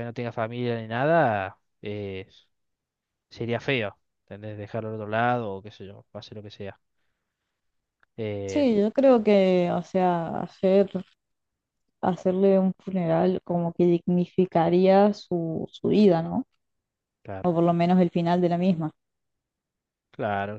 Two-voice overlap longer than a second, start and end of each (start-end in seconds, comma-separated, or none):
none